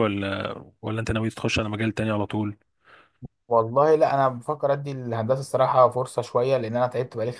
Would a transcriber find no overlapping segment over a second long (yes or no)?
yes